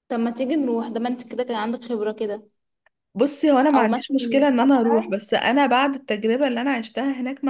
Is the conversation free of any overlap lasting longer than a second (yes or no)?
no